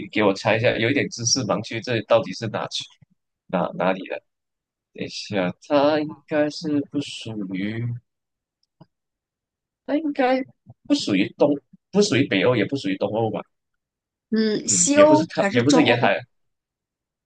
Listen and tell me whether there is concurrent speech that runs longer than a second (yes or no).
yes